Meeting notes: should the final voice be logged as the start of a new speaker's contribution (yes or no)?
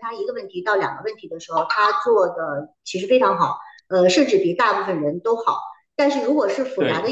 no